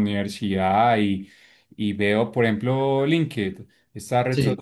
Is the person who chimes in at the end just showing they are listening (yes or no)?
yes